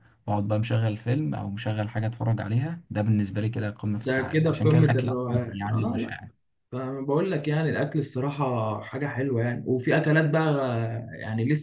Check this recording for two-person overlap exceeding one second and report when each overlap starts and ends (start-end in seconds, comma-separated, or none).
4.0-6.1